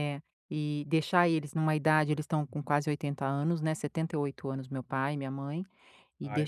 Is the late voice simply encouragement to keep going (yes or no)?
yes